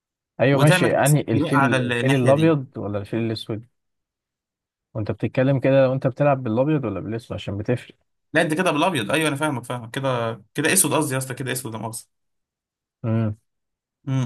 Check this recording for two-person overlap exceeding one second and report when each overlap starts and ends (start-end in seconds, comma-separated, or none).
0.5-2.5